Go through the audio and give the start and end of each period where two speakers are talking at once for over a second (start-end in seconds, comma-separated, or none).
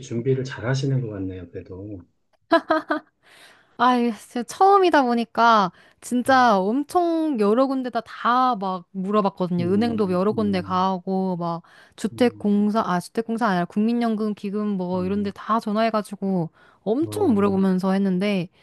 9.6-10.9